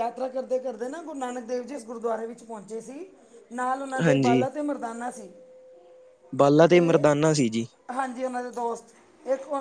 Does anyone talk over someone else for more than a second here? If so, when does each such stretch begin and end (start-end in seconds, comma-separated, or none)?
none